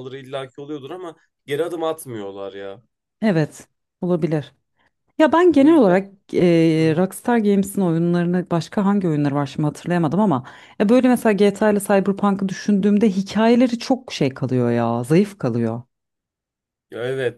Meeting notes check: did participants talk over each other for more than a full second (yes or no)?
no